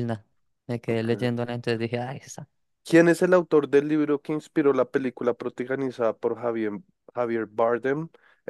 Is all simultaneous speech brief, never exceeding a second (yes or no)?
yes